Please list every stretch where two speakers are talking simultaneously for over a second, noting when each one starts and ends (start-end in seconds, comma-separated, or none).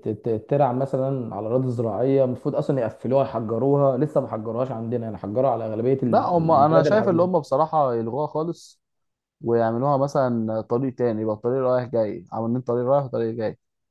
6.1-7.3